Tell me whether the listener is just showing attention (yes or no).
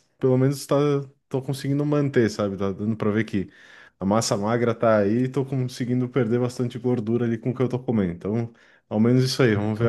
yes